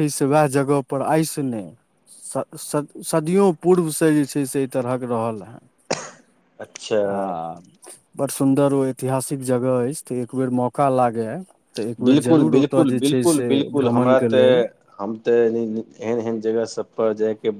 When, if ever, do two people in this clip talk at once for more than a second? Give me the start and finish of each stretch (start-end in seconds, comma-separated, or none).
12.1-14.5